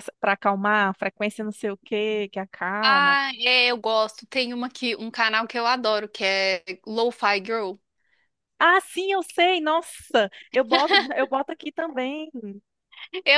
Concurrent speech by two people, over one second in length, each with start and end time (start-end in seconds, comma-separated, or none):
none